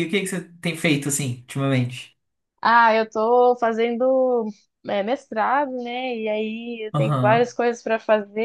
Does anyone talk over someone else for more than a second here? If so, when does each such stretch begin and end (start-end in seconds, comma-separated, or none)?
none